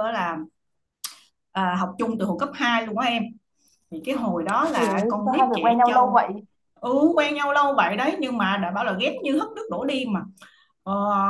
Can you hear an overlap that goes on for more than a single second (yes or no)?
yes